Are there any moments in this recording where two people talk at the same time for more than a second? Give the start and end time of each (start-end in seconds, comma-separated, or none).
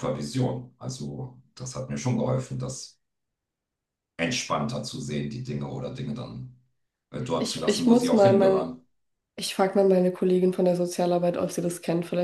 7.3-8.7